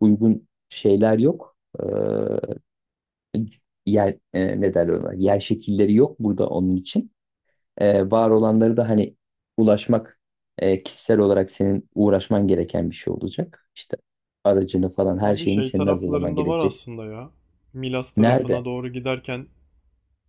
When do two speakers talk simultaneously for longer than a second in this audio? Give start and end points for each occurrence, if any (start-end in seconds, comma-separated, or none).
15.2-16.8